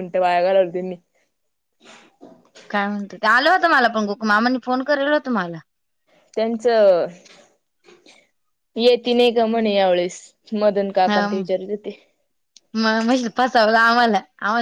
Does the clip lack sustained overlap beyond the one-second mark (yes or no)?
yes